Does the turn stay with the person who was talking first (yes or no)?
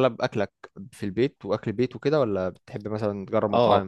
no